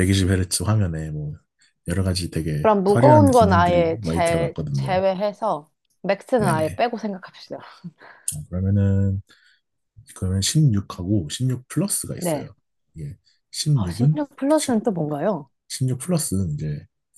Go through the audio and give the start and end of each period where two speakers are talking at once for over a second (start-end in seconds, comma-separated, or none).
2.6-5.0